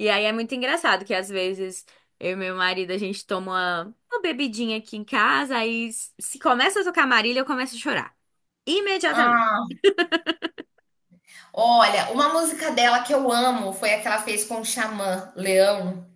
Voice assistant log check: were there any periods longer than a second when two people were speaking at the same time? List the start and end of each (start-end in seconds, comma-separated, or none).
none